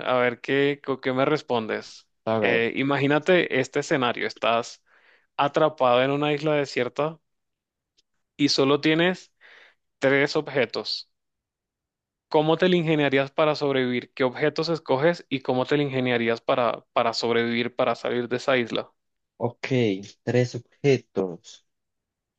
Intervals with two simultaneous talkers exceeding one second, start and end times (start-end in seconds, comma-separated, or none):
none